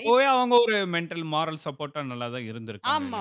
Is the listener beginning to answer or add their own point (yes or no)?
yes